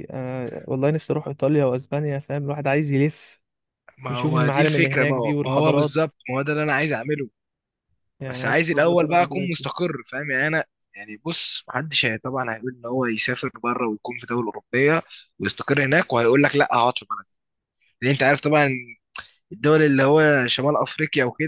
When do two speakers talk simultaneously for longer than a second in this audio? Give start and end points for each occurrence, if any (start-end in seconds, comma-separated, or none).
4.1-5.9, 8.3-9.7